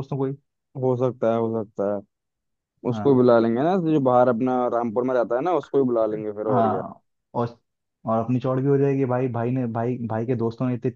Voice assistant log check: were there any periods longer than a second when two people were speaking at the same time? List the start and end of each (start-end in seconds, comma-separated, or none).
none